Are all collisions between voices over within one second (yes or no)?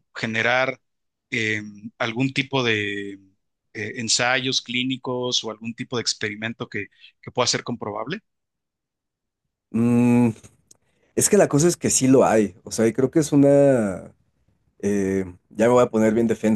yes